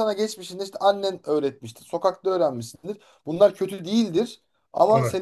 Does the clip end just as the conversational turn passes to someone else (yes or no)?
no